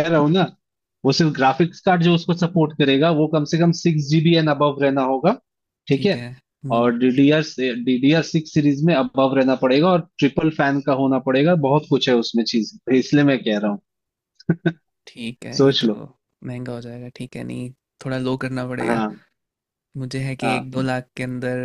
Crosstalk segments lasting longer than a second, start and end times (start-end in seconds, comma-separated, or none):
none